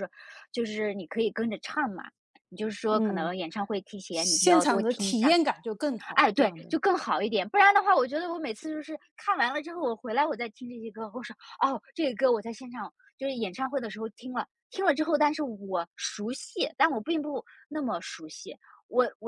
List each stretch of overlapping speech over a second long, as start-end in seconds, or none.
4.1-5.3